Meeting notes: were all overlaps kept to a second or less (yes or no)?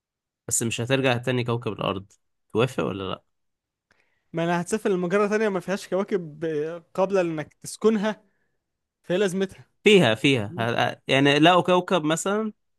yes